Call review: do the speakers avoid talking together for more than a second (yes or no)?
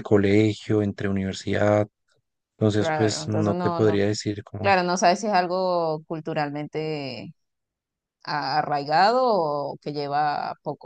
no